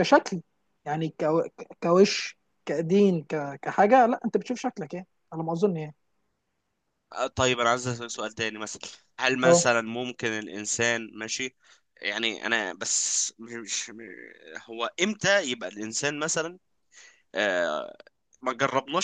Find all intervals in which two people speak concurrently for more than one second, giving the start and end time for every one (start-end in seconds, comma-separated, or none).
none